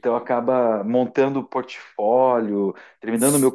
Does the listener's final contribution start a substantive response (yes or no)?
yes